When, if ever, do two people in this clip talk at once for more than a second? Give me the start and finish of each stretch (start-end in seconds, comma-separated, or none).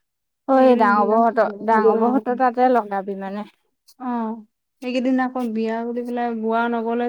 0.5-2.4